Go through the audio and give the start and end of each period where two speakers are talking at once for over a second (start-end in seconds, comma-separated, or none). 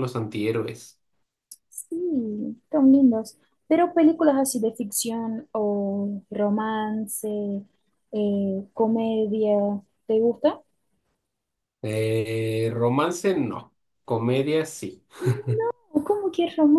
none